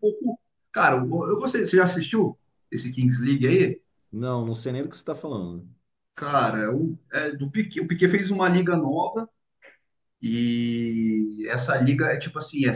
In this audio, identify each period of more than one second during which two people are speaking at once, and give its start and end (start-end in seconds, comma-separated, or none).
none